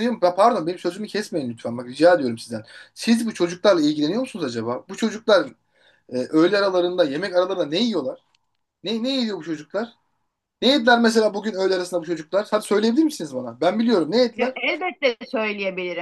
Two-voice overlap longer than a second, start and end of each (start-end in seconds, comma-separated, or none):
none